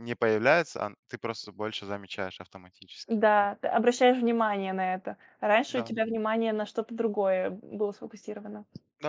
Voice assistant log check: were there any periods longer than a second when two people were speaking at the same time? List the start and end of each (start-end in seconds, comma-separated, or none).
none